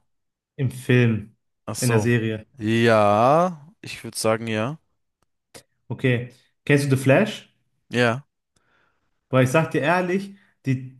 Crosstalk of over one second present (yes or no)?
no